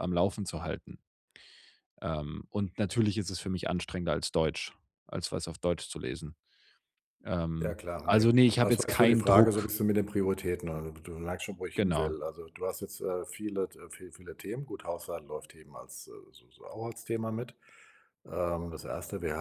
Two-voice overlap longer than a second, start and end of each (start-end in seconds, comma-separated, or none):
7.6-9.7